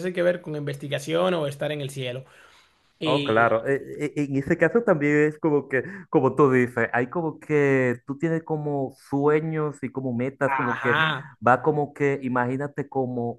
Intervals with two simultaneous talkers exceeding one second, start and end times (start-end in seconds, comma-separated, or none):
none